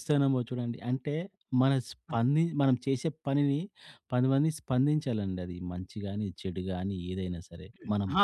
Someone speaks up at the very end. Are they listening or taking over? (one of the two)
taking over